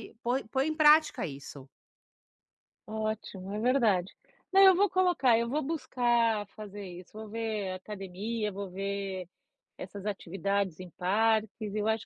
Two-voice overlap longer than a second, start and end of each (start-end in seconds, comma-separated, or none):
none